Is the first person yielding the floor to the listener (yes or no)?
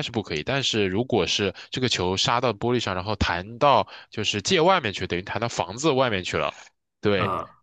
no